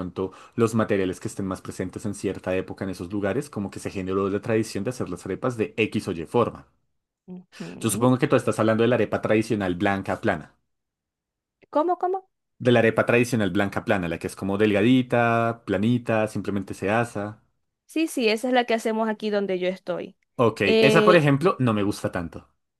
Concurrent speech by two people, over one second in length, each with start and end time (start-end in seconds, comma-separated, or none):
none